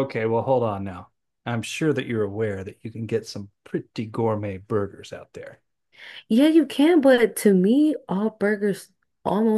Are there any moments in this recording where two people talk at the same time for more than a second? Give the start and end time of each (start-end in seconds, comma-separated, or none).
none